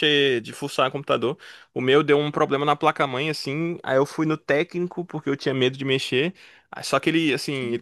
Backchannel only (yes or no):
yes